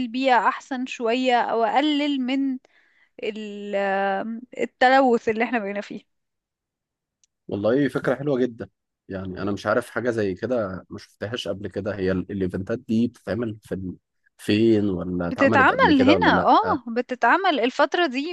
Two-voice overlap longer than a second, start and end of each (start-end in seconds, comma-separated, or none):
15.3-16.8